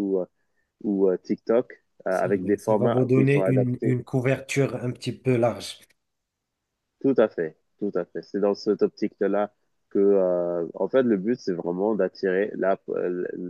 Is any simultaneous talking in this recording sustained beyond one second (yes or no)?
yes